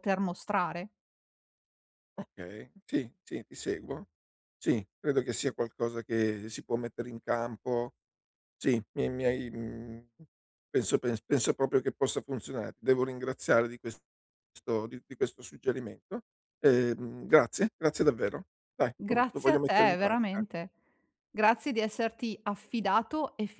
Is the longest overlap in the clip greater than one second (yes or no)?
yes